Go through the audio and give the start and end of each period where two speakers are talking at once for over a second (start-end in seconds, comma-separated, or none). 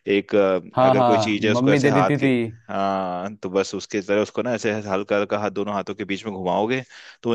0.8-2.3